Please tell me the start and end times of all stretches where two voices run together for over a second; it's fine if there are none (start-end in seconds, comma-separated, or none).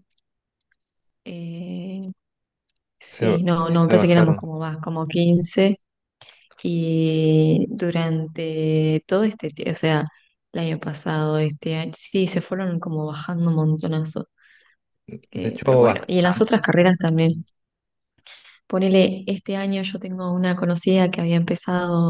3.1-4.5, 15.3-17.3